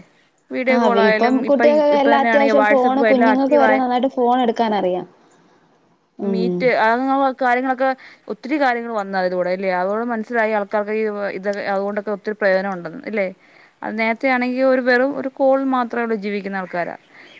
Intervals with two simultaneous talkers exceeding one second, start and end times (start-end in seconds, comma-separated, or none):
0.7-3.8